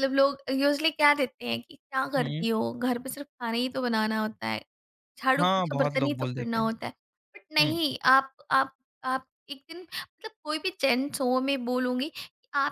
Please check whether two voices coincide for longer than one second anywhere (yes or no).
yes